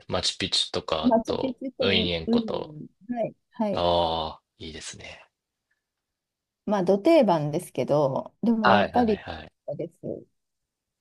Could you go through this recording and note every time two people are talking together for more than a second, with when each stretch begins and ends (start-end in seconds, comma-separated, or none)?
1.0-2.8